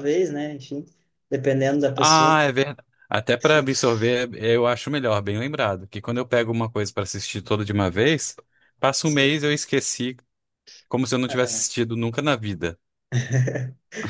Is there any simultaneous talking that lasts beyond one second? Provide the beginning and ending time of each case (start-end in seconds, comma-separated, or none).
none